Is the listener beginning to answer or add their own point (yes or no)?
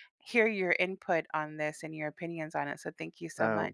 yes